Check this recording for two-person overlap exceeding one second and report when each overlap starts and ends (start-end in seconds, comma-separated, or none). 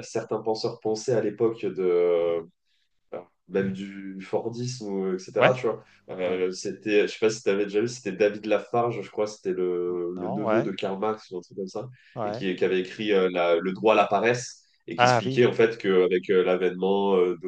none